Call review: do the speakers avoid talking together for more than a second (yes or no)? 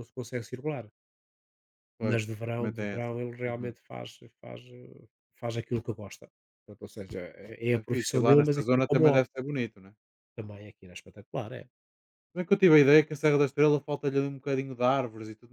no